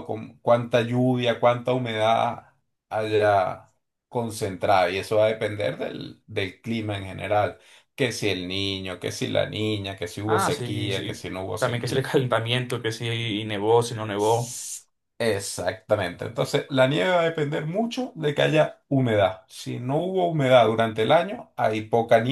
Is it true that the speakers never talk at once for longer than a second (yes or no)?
no